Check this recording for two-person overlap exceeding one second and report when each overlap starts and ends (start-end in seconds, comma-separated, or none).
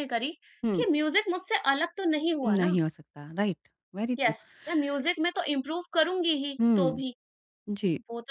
none